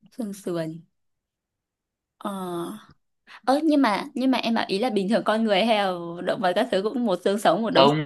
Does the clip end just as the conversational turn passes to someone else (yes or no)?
yes